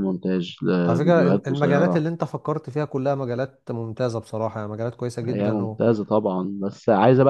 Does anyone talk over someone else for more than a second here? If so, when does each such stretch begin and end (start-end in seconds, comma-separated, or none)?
0.8-2.1